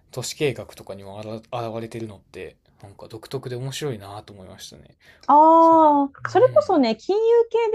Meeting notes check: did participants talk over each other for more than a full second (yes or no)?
yes